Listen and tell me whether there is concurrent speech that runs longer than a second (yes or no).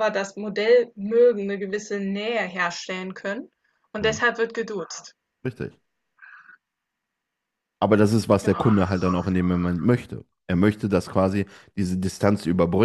no